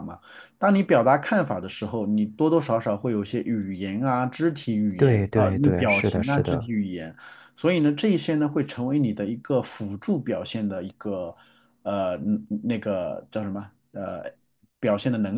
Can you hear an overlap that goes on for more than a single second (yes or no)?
yes